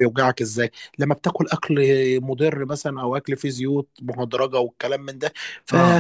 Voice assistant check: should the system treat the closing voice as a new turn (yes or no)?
no